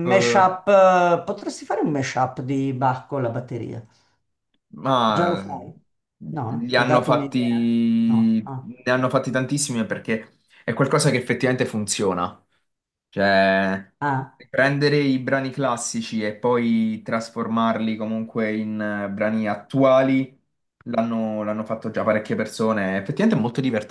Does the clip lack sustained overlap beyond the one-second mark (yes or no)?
no